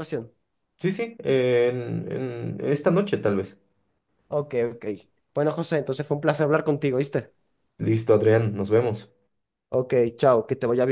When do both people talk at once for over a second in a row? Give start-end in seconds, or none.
none